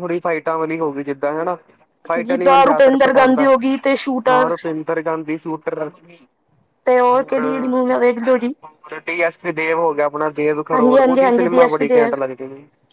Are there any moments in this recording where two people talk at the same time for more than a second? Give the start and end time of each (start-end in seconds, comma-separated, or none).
2.2-4.5, 10.7-12.0